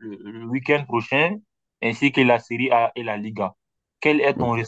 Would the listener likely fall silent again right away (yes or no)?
yes